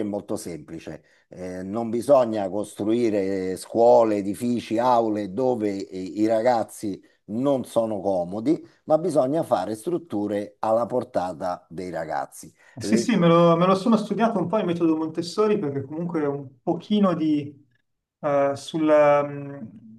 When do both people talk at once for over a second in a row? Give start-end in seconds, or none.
none